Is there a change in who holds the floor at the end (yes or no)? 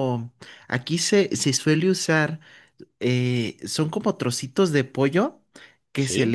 no